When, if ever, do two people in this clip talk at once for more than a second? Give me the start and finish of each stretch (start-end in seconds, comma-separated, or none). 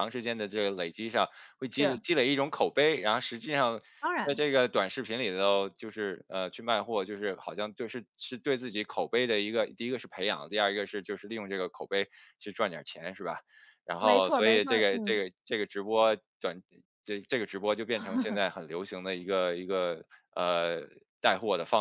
14.0-15.2